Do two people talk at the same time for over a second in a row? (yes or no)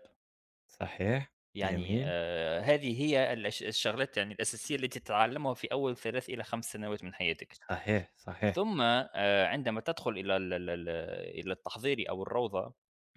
no